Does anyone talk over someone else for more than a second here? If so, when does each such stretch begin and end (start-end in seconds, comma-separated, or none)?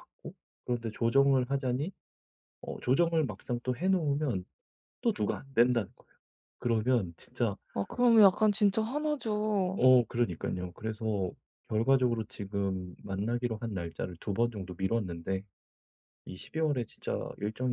none